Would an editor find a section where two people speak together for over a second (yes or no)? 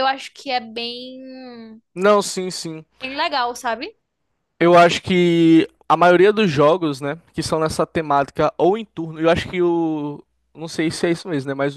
no